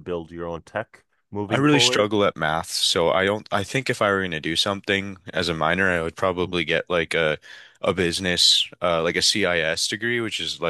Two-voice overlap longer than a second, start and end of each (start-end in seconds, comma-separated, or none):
none